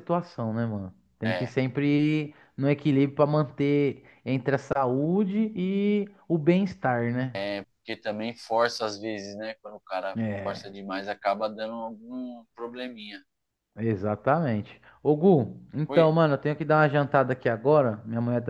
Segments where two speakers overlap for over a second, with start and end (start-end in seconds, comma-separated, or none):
none